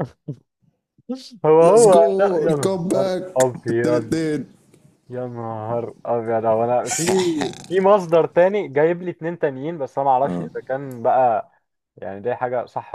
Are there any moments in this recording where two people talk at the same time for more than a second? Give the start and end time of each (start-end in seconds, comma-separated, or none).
1.6-4.1